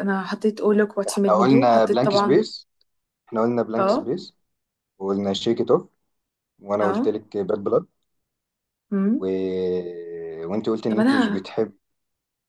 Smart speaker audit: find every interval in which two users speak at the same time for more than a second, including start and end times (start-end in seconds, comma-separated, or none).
1.1-2.5